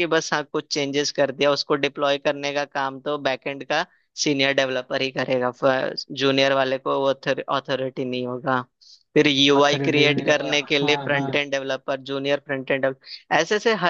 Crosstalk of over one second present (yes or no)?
yes